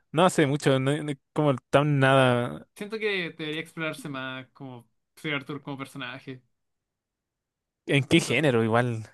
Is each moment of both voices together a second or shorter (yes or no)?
yes